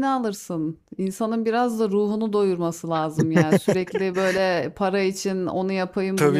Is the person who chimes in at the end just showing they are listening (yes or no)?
no